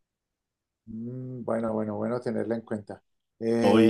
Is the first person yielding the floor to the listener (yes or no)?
yes